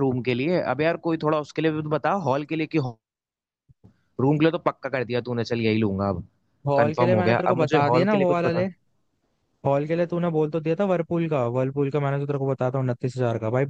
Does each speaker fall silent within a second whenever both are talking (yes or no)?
no